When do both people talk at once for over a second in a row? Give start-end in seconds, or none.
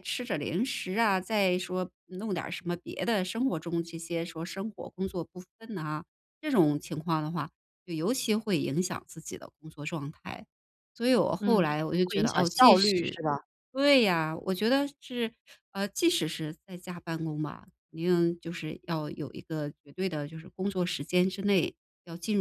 11.4-13.2